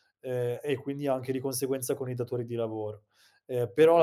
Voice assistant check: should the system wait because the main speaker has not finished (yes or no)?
yes